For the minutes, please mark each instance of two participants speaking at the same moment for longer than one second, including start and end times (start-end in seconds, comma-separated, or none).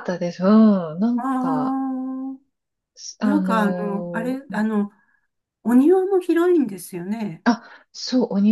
3.2-4.7